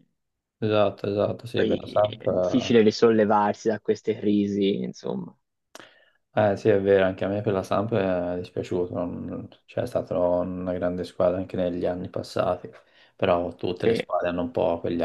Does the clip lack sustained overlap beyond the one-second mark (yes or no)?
no